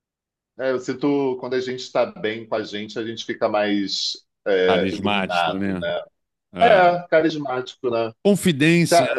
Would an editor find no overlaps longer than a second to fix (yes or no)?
no